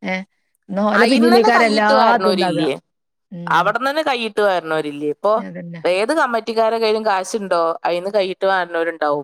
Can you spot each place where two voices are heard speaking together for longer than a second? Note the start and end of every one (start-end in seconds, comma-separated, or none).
1.1-2.6